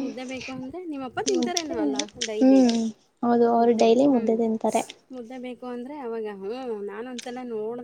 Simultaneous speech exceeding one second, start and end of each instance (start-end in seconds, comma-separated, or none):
none